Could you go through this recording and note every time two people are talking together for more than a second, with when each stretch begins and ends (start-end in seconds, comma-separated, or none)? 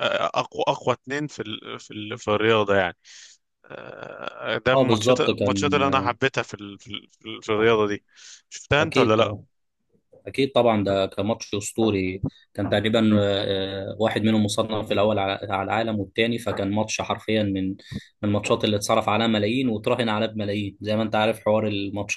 4.7-6.1